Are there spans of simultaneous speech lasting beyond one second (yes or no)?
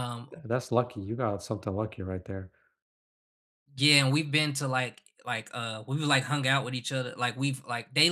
no